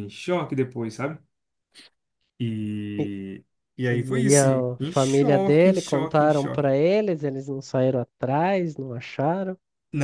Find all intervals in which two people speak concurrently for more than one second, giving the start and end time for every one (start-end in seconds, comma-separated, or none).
4.3-6.7